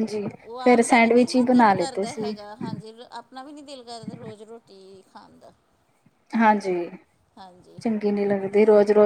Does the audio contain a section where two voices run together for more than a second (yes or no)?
yes